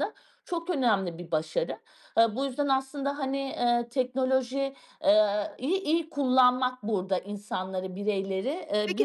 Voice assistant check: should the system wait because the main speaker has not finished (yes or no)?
no